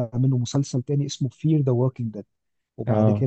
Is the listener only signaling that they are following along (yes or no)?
yes